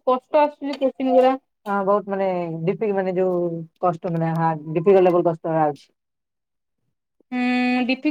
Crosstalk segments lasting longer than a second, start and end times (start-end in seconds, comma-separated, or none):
none